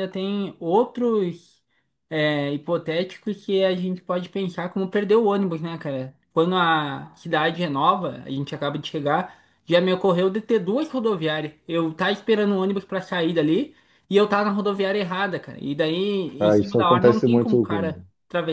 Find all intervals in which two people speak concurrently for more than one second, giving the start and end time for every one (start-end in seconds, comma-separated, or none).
16.4-17.9